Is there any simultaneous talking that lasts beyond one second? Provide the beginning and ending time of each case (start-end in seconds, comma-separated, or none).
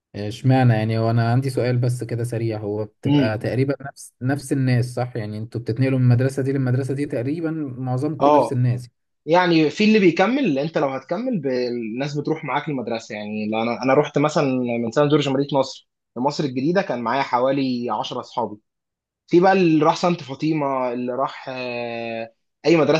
none